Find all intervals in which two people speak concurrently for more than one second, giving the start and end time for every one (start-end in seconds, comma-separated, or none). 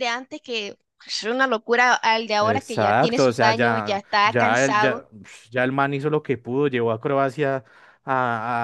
2.4-5.0